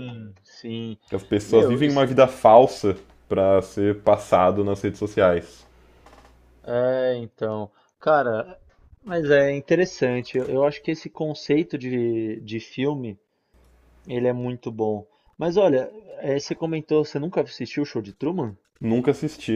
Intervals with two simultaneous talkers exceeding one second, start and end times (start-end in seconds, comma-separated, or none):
none